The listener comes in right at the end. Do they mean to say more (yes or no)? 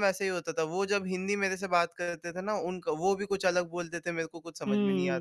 yes